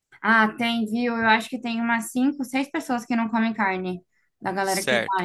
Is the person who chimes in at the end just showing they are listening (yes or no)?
no